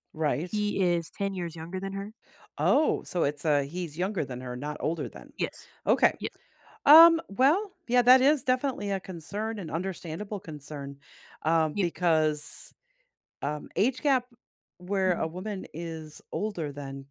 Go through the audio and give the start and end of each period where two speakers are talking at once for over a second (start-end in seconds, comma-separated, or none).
none